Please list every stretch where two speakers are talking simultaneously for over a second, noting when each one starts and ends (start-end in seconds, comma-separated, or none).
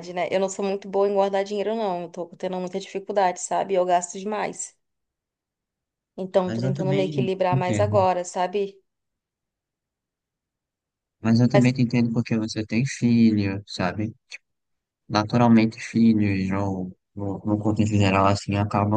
6.4-8.0